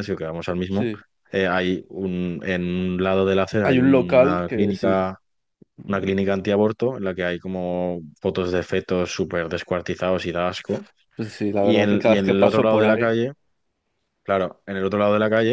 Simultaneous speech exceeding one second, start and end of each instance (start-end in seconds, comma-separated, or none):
3.6-5.0, 11.6-13.2